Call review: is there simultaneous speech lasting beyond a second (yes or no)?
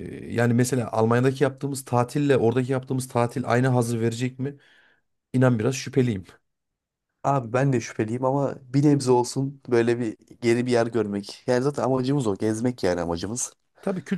no